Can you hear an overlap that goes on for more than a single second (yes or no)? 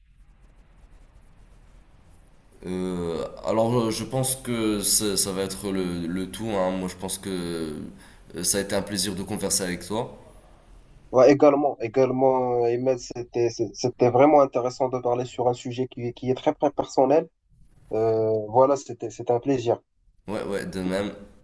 no